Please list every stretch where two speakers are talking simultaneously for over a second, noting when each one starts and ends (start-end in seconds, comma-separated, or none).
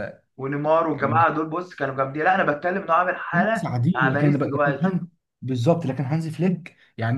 3.3-5.0